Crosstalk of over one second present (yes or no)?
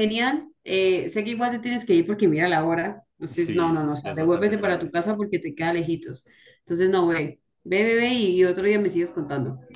yes